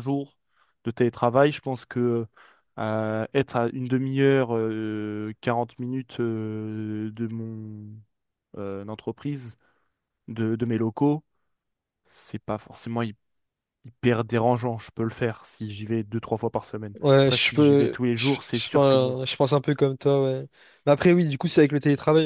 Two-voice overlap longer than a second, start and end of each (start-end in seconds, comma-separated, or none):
16.9-19.2